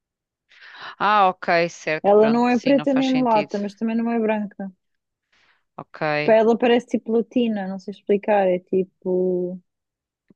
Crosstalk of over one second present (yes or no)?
yes